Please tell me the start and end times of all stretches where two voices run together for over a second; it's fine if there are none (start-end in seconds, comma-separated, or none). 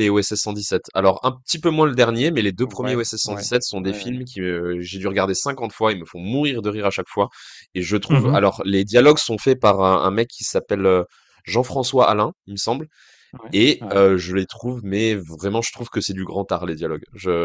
2.6-4.2